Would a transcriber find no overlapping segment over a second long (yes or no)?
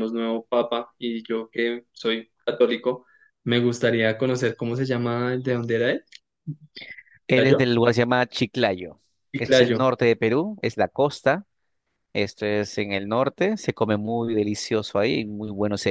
yes